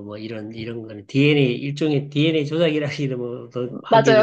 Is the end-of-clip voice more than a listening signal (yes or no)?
yes